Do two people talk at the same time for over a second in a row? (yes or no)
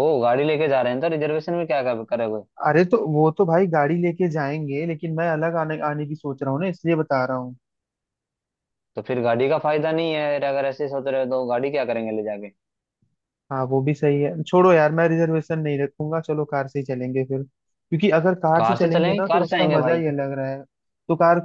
yes